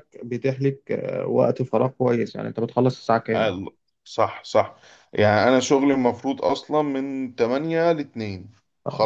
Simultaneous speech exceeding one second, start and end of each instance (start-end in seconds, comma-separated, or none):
none